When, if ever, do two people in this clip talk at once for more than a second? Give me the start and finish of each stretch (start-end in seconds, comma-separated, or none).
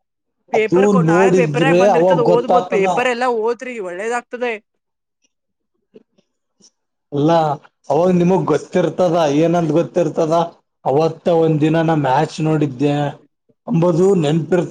0.6-2.9